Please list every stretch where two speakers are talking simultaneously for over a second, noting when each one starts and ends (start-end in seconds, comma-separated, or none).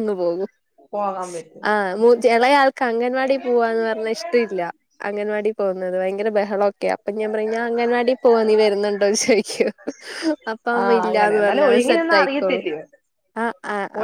10.8-12.6